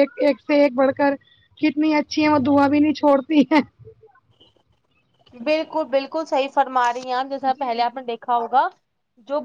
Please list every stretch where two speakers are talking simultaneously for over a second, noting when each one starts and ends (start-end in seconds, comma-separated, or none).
none